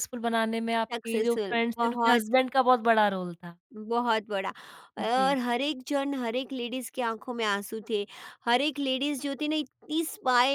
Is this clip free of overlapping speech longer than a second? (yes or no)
no